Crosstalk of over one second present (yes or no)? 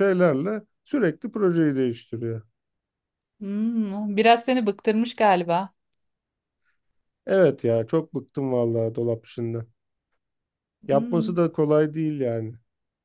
no